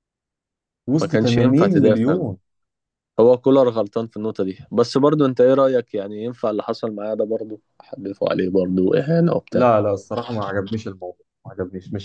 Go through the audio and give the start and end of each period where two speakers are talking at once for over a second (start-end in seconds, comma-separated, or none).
1.0-2.3